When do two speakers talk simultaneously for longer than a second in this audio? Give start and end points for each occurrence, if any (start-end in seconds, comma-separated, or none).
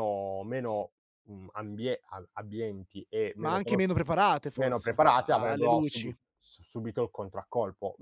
4.5-6.2